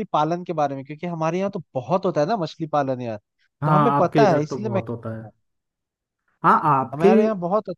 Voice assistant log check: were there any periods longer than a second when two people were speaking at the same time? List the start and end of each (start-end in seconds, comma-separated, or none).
3.6-5.3